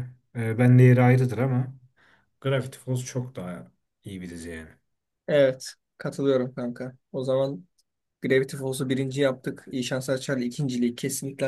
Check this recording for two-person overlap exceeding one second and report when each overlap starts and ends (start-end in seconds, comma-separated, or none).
none